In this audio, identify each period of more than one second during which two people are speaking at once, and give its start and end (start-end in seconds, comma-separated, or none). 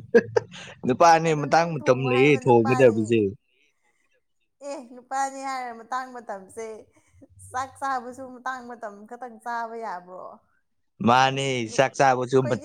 1.3-3.0